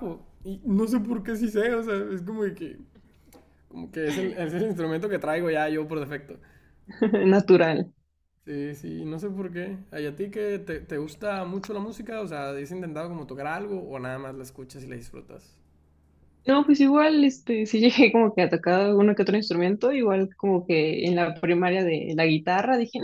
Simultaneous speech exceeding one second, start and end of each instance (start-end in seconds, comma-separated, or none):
none